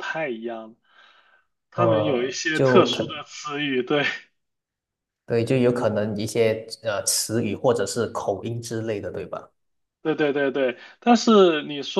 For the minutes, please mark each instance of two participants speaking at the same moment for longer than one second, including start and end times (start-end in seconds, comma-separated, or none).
1.7-3.0